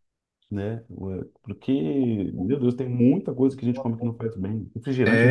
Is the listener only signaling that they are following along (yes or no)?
no